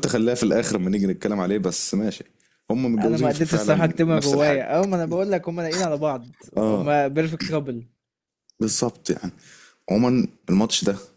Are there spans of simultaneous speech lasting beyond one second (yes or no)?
yes